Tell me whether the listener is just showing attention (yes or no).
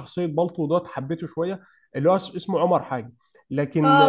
no